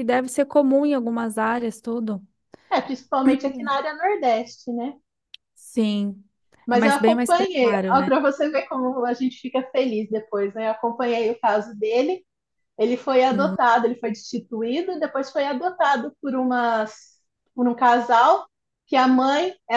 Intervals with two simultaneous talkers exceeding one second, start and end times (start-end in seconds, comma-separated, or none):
6.7-8.1